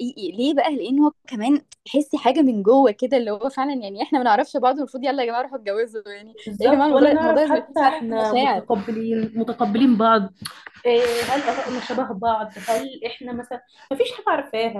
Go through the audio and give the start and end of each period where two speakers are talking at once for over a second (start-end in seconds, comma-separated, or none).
6.5-8.7